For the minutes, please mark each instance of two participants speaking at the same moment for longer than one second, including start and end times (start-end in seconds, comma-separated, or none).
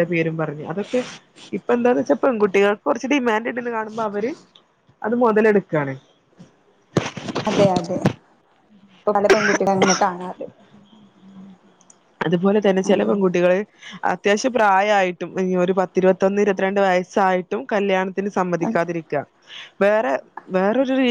none